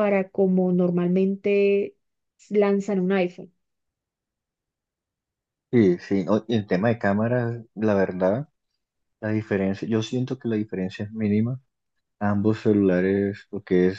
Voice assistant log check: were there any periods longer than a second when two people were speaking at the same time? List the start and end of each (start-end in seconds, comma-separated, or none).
none